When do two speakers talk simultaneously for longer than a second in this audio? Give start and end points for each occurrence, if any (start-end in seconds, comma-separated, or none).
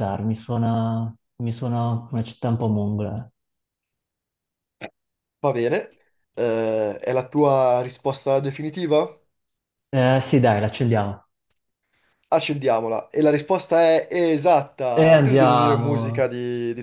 14.9-16.3